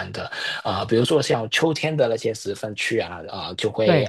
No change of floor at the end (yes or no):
yes